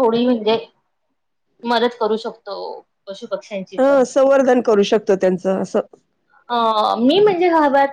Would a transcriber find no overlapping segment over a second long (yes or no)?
yes